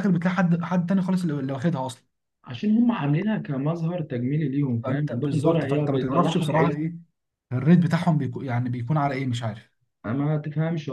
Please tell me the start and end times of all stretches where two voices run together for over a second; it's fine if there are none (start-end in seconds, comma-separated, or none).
4.8-6.5